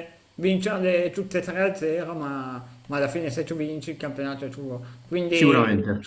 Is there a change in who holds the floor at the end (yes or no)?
no